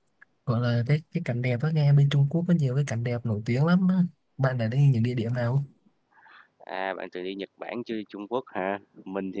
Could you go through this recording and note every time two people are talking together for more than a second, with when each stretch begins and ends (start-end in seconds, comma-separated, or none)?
none